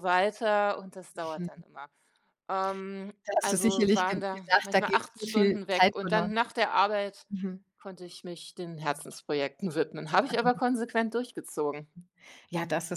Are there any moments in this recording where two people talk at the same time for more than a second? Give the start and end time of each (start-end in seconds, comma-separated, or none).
3.3-6.3